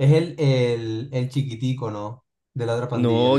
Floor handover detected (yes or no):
yes